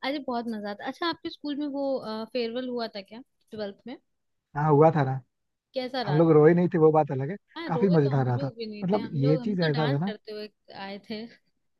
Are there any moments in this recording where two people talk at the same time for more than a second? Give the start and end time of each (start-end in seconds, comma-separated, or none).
7.6-10.1